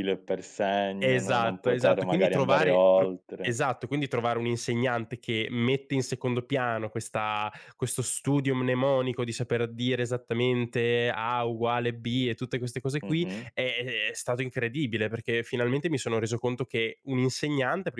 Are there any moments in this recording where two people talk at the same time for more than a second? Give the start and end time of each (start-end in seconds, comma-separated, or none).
1.0-3.6